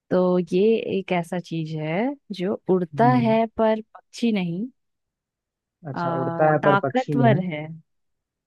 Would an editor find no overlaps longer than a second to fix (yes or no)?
no